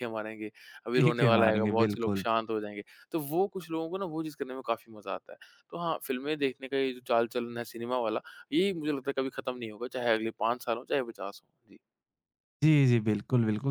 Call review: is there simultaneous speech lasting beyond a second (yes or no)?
yes